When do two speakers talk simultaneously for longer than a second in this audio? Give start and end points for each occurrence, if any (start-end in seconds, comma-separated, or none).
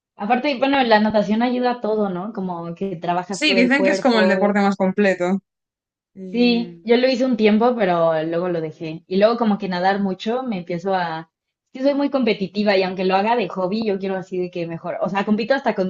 3.3-4.6